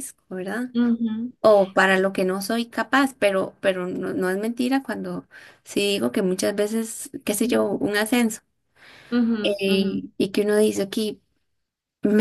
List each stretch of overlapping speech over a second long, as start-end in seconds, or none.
none